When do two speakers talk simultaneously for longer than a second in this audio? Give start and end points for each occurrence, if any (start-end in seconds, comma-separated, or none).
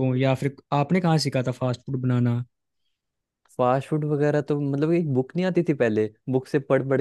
none